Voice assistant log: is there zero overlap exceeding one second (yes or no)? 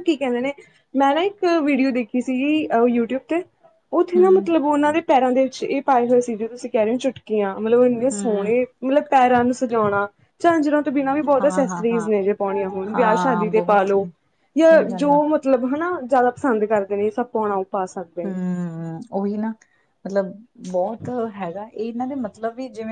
no